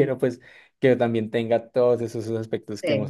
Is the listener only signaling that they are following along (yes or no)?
no